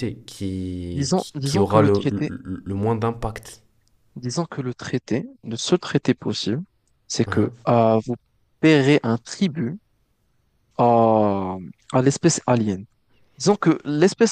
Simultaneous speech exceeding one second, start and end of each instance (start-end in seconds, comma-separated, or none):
0.9-2.3